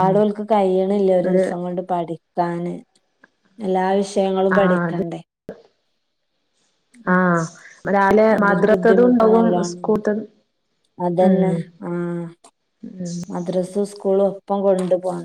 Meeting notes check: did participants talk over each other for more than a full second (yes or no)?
yes